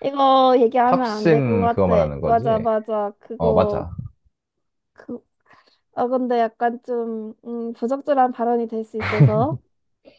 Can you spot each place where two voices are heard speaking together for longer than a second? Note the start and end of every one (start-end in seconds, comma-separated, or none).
0.8-2.7